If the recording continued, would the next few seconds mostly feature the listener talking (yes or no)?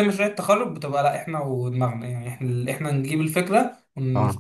no